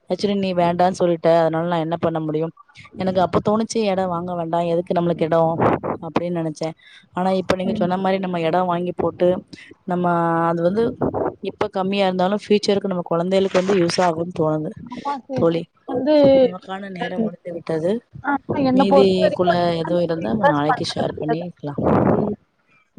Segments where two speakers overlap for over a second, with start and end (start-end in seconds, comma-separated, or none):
18.8-21.0